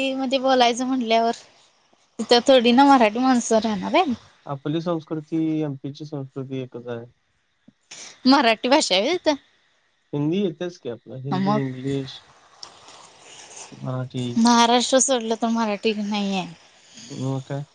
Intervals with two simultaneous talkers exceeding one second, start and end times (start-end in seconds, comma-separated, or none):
none